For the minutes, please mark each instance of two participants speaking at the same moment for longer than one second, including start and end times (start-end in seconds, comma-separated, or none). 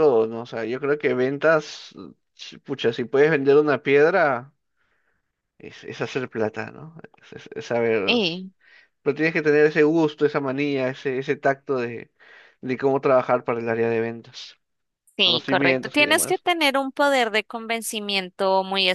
15.2-16.4